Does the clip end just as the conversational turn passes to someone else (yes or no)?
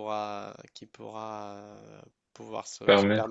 no